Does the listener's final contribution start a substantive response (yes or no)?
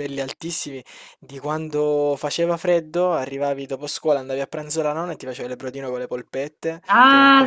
no